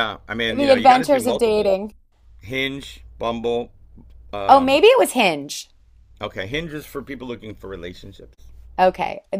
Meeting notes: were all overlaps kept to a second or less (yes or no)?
no